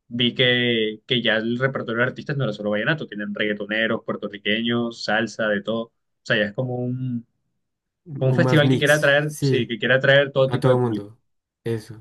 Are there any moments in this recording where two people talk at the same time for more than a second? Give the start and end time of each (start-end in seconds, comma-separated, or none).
8.2-9.7